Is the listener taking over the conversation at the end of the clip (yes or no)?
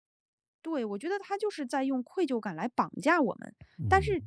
no